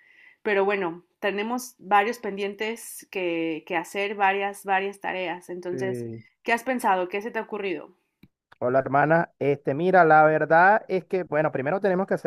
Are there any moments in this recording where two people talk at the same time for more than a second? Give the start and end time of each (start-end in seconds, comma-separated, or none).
none